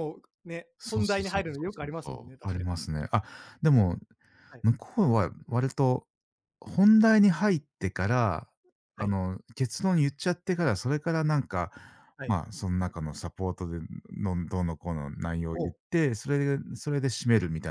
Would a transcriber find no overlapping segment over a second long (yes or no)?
no